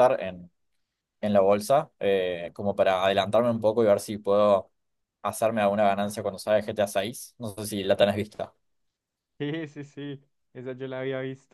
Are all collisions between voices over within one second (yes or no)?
yes